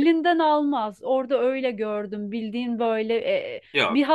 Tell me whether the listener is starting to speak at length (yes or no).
no